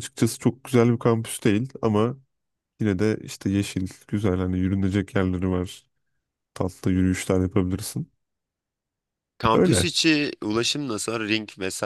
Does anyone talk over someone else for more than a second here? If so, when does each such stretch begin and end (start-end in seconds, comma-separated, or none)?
none